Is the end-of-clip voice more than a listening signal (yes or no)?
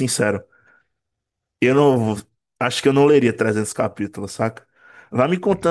no